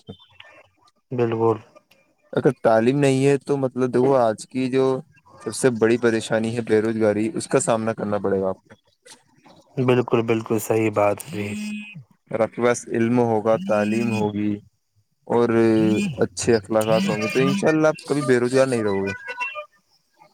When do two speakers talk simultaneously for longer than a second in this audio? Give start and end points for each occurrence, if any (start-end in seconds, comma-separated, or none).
none